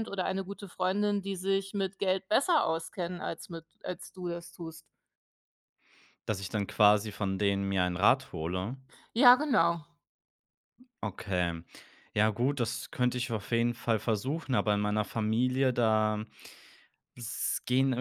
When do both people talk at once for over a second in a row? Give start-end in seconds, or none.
none